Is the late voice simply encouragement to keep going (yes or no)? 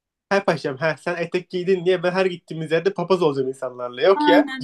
no